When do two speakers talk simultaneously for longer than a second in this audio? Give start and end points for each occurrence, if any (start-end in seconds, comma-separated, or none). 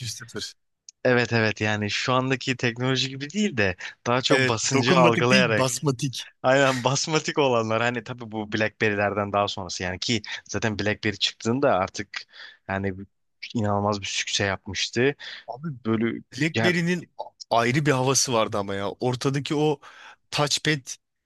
4.3-5.7